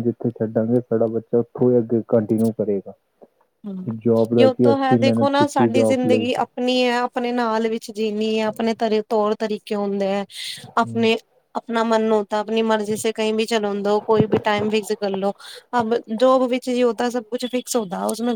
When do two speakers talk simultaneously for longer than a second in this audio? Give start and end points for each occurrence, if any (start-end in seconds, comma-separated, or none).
4.4-6.2